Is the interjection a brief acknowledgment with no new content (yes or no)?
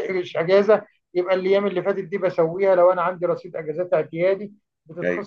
yes